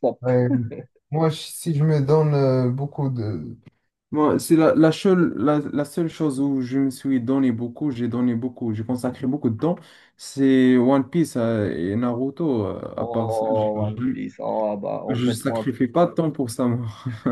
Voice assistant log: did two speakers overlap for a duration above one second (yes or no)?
yes